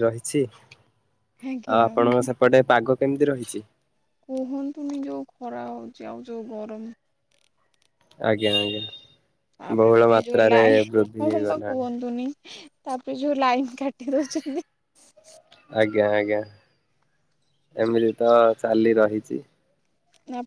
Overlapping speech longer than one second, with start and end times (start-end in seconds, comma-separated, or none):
9.8-11.8